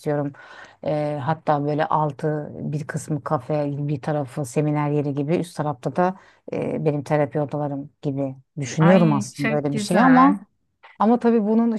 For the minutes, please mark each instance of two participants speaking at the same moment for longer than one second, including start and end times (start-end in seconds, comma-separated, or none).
8.8-10.4